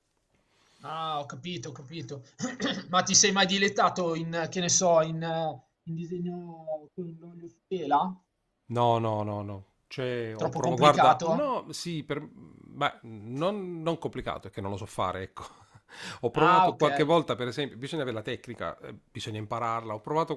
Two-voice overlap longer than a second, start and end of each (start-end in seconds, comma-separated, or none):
10.3-11.6